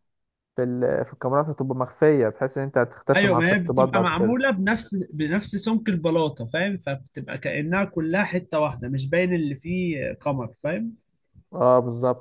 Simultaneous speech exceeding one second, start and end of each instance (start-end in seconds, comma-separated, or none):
3.1-4.4